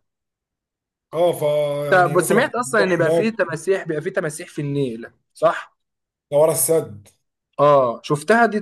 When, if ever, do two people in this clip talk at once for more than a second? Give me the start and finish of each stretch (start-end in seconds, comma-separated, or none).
1.9-3.4